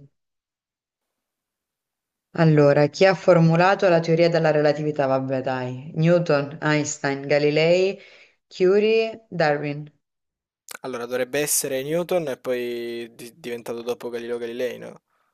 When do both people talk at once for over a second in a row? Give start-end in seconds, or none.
none